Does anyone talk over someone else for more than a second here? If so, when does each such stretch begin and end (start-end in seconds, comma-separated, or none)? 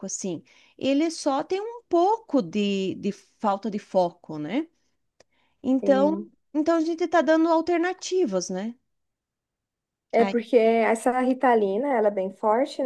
none